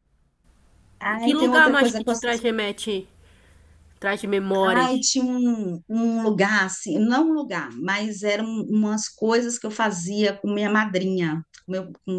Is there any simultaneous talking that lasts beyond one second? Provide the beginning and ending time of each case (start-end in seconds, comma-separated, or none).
1.1-2.4